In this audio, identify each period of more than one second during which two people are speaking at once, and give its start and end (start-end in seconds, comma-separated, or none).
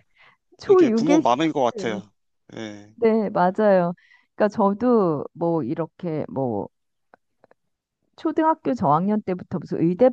0.7-2.0